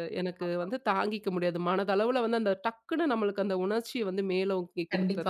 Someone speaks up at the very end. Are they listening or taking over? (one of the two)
taking over